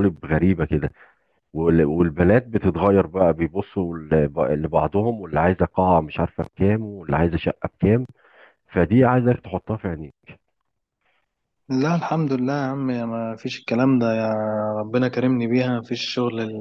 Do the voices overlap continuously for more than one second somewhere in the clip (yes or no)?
no